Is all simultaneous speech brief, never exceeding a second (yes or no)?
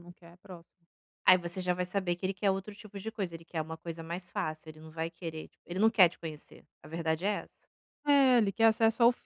yes